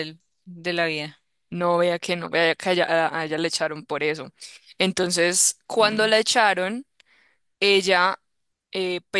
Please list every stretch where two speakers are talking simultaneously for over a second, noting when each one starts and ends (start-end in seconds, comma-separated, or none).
none